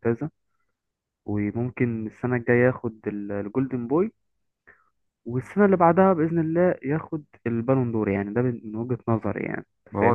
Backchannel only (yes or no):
no